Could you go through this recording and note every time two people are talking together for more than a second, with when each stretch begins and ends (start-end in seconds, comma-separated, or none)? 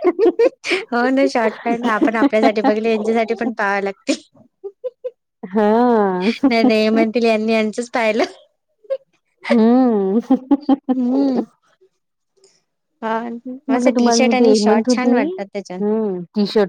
13.7-15.2